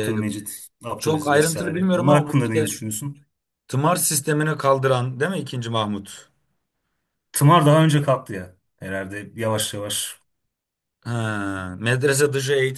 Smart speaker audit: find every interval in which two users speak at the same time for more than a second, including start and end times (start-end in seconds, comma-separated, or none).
1.0-2.7